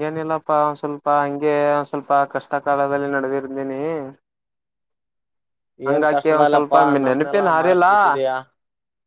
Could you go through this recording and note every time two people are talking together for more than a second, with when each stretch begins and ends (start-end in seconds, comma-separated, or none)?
5.9-7.9